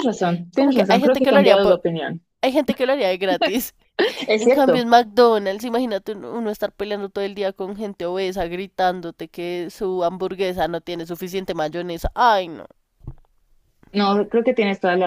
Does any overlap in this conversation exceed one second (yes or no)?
yes